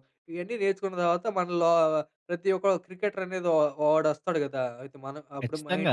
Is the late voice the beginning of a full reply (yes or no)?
yes